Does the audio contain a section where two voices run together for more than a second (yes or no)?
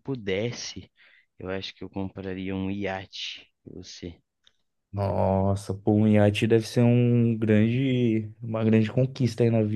no